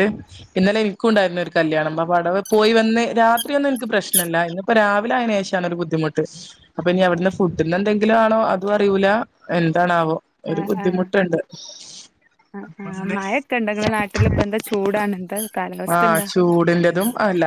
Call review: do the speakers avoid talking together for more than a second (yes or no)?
yes